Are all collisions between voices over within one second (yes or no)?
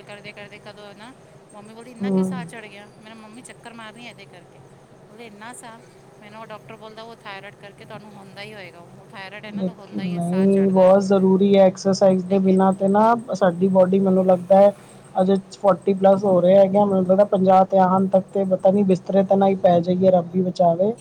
no